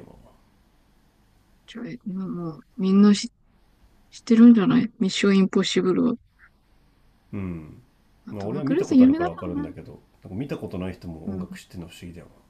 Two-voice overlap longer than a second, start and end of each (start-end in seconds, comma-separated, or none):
8.3-9.7